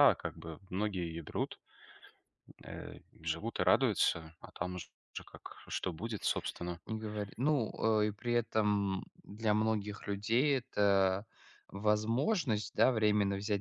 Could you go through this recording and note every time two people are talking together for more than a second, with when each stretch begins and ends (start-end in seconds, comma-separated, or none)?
none